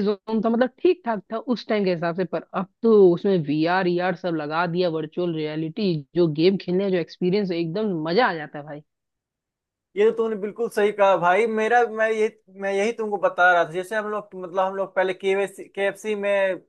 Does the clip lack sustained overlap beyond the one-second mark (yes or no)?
yes